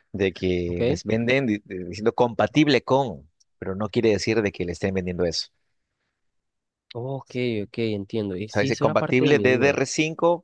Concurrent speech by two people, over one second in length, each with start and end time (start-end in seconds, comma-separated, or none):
8.5-9.8